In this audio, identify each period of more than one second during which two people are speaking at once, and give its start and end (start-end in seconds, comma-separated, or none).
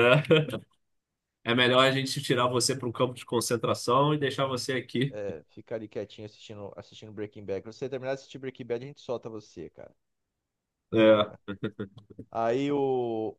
none